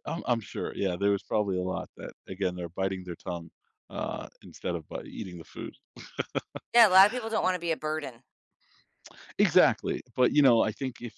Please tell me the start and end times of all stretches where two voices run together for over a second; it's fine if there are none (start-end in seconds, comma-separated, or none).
none